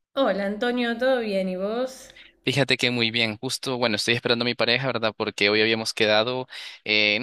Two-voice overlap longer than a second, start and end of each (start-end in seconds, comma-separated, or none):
none